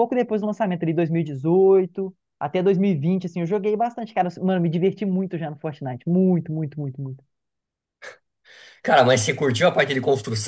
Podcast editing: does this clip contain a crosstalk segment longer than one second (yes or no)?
no